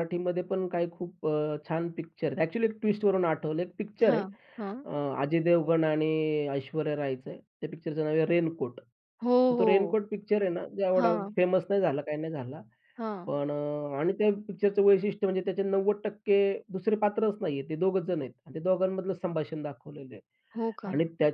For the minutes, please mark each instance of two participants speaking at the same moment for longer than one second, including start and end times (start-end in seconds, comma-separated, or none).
none